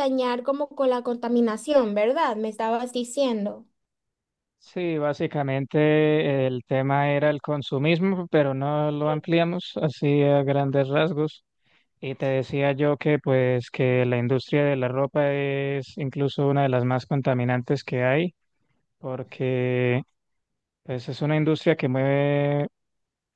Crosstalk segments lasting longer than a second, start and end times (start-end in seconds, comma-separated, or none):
none